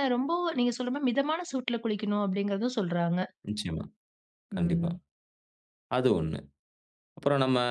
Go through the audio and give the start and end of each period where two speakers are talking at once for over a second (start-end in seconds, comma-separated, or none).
none